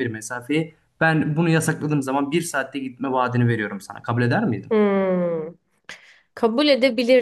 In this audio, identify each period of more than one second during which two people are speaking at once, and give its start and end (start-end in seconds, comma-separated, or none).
none